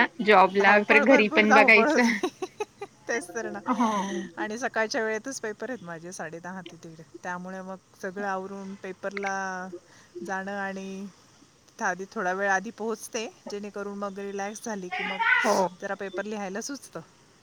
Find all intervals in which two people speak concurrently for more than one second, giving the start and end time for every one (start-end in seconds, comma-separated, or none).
0.6-2.1